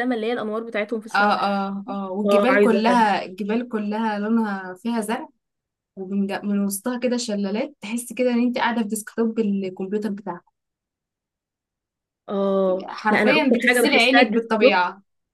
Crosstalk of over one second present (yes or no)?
yes